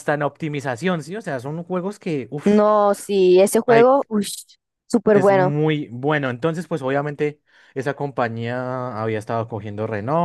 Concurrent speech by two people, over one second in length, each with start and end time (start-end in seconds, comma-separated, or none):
none